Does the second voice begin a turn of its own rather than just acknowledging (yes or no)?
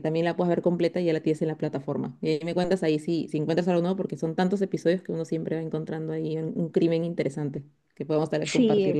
yes